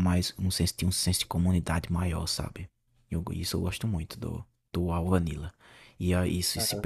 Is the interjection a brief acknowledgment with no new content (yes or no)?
yes